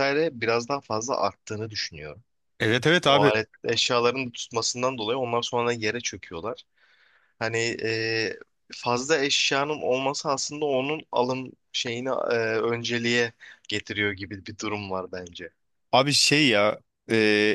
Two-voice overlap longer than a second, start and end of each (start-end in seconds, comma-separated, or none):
none